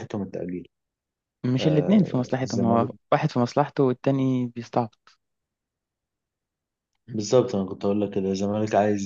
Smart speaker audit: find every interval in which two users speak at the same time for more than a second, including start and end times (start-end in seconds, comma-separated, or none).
1.6-2.9